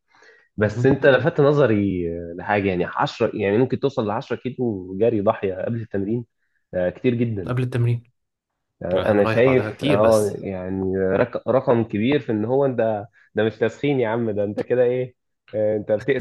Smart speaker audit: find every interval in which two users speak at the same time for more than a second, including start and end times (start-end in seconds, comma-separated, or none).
9.0-10.4